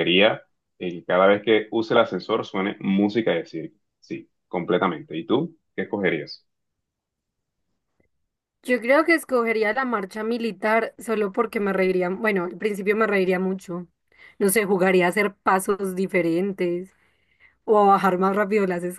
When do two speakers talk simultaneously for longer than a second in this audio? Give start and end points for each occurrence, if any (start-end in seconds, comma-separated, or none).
none